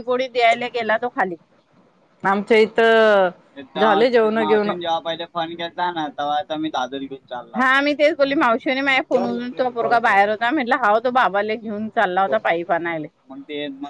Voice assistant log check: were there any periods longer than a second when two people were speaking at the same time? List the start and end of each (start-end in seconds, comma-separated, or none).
none